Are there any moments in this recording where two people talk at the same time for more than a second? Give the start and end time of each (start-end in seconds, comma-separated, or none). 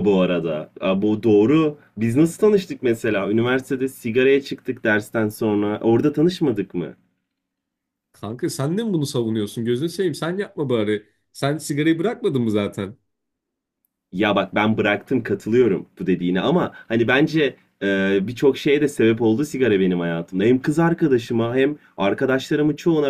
none